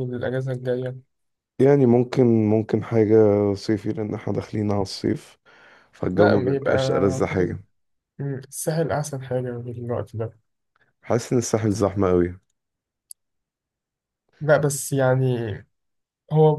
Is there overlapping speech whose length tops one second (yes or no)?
yes